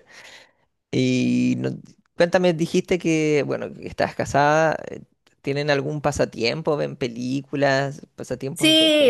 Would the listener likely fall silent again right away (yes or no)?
no